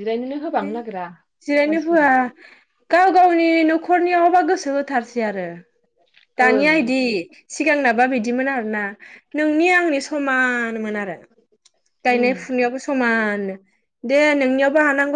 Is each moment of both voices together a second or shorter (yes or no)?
yes